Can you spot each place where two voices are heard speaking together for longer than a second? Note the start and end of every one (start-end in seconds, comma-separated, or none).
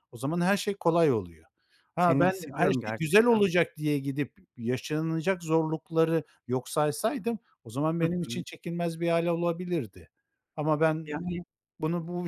2.0-3.5